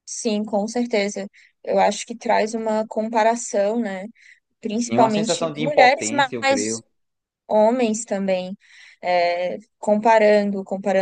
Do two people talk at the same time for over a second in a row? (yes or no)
yes